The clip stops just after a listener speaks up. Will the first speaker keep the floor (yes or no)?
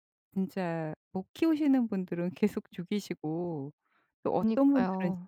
yes